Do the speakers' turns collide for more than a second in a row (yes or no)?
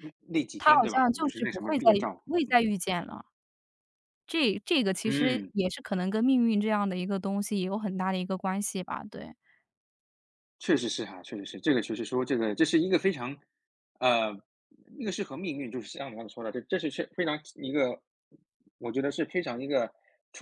yes